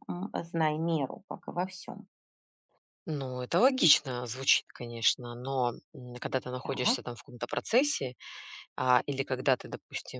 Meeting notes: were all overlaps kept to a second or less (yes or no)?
yes